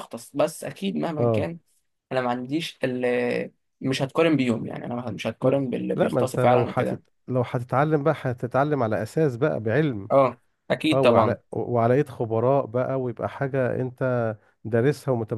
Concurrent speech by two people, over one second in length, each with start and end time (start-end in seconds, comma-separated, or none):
5.4-7.0